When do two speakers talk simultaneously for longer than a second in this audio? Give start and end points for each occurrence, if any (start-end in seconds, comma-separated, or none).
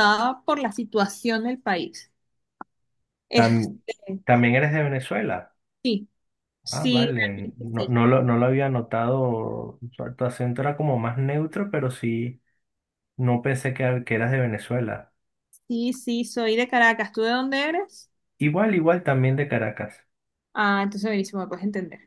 6.7-8.0